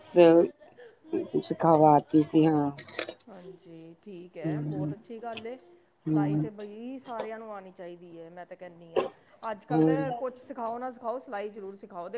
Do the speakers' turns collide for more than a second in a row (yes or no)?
no